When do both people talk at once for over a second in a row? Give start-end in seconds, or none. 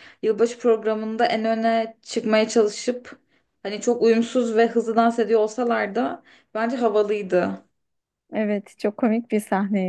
none